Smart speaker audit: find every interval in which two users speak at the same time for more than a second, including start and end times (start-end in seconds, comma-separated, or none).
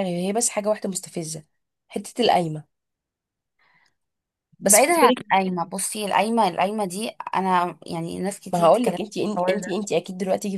none